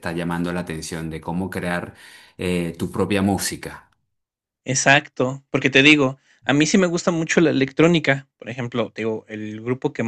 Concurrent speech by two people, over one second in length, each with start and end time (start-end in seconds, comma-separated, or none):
none